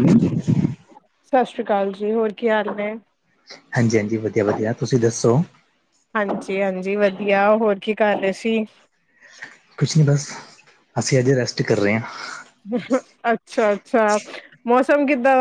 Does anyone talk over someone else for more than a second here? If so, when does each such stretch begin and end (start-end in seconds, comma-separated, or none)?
none